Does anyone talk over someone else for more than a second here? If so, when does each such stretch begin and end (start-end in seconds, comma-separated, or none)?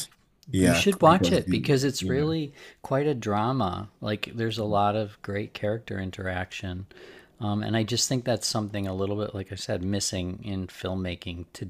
0.6-2.3